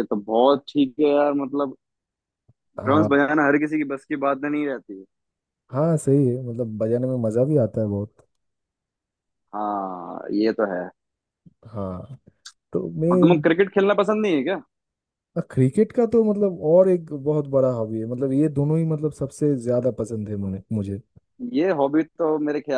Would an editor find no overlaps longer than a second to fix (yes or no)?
yes